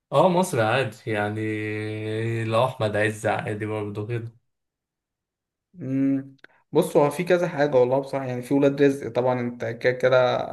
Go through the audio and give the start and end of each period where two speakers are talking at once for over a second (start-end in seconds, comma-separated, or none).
none